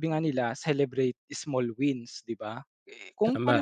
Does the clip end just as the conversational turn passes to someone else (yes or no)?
no